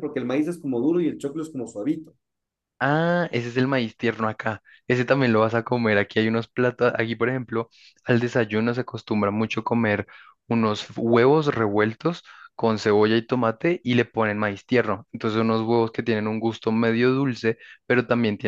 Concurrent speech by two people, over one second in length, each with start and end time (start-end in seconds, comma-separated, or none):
none